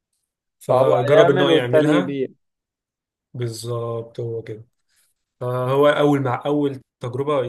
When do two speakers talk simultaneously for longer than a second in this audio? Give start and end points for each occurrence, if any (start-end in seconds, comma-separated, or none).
0.7-2.2